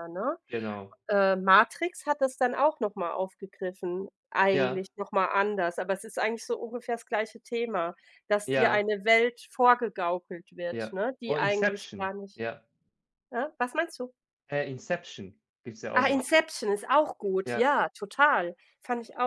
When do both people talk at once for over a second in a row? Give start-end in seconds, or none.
10.7-12.4